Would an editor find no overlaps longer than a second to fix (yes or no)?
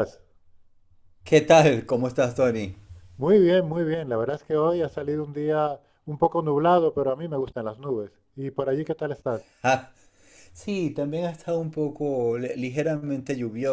yes